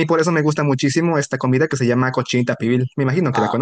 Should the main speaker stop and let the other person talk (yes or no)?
yes